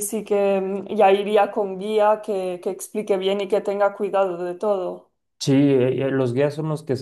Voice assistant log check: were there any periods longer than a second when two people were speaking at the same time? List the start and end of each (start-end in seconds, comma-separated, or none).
none